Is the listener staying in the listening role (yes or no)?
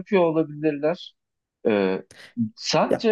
yes